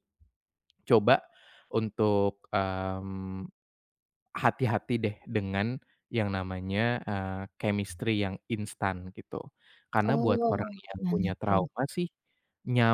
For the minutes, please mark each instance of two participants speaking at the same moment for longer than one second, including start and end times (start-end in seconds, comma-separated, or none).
10.1-11.7